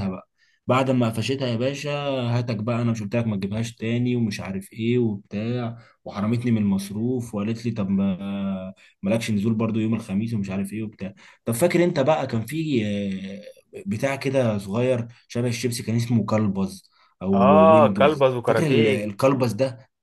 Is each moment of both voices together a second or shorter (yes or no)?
no